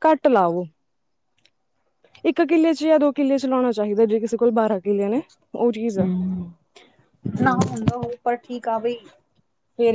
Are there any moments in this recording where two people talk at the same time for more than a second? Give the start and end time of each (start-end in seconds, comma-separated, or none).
none